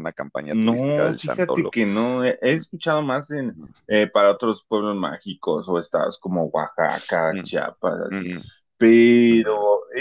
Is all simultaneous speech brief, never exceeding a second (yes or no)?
no